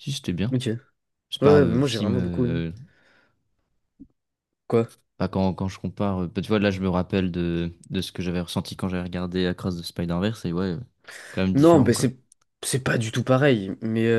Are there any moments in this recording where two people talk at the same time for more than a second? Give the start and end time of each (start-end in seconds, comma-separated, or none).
1.4-2.6